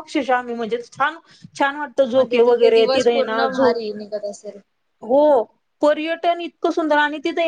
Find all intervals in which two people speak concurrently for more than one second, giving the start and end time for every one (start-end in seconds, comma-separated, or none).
2.1-3.8